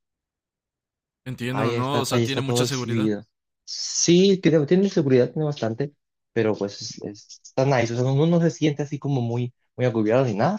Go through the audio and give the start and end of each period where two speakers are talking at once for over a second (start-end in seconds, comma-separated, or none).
1.5-3.1